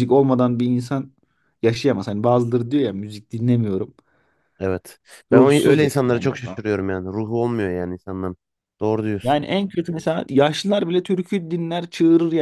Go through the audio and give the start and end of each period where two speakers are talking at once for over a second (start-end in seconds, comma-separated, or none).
5.3-6.6